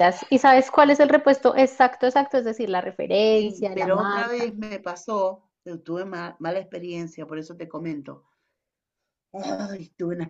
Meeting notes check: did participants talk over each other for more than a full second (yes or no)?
yes